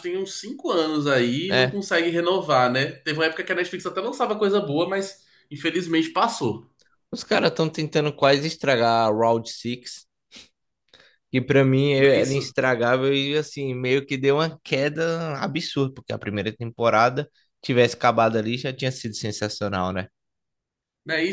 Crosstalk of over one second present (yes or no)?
no